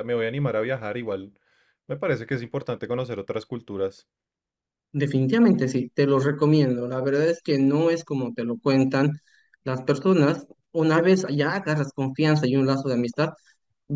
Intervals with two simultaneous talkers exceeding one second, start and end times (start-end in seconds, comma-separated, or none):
none